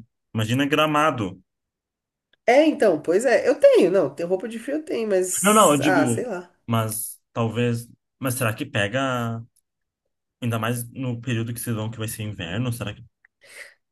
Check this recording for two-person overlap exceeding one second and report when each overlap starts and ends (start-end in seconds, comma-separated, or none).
none